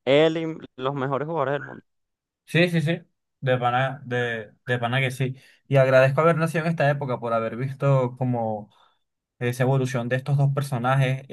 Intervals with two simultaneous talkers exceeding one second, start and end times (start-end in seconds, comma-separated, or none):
none